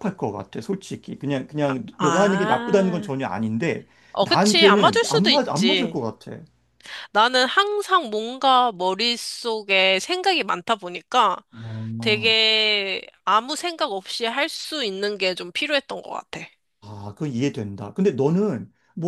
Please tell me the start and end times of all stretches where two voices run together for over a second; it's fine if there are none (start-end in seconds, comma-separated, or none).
1.7-3.1, 4.1-6.0